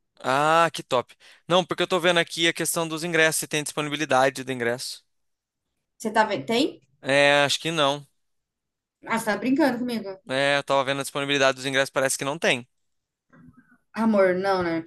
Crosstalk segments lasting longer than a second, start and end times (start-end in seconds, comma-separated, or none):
none